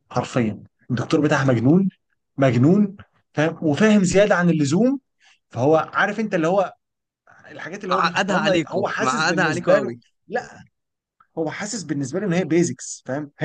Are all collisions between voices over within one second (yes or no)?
no